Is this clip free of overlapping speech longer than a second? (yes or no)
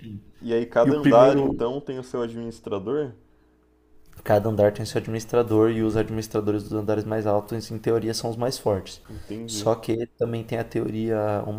yes